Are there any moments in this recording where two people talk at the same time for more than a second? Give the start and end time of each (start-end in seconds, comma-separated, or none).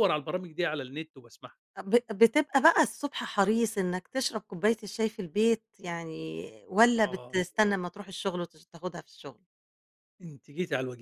none